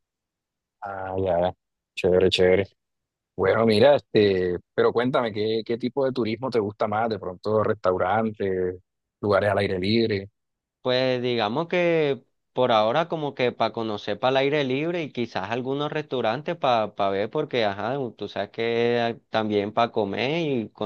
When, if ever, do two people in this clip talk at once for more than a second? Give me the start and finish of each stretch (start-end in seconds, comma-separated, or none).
none